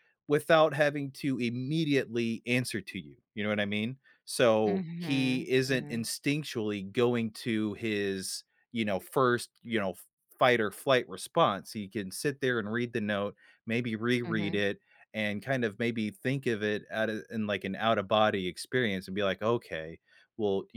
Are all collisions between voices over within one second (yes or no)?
no